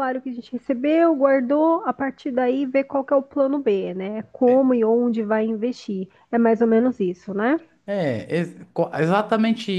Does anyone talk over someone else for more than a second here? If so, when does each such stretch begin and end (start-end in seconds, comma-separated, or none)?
none